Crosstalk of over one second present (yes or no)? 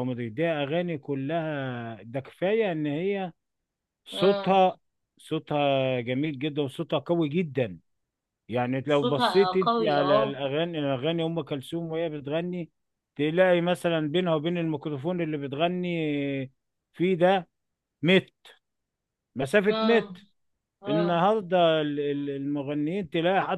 yes